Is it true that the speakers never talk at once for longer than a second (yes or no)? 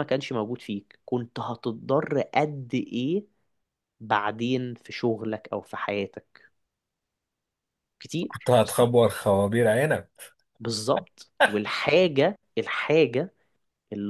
yes